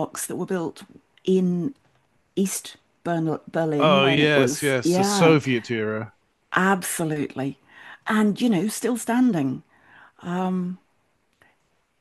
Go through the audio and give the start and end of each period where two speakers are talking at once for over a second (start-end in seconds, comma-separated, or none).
3.8-5.3